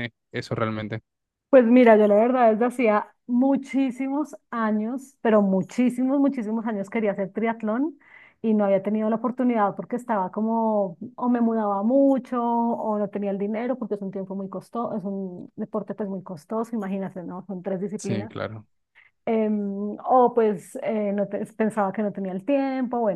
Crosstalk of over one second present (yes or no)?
no